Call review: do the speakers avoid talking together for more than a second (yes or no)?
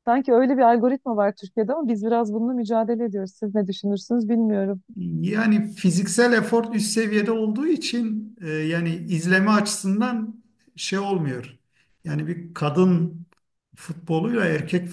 yes